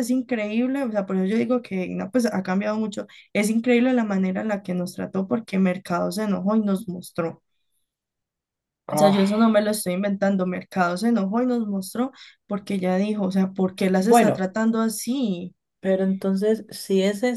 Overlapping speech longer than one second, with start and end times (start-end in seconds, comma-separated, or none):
none